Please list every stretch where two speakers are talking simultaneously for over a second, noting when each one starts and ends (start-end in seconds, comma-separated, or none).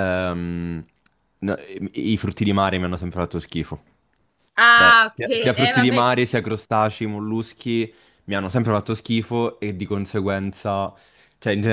4.7-6.1